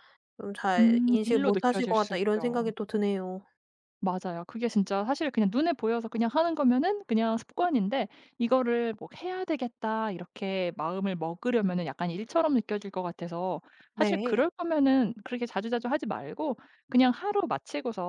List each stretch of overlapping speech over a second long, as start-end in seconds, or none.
0.8-2.7